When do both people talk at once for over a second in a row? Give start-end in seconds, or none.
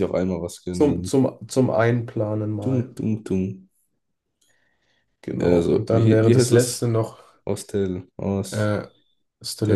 5.4-6.8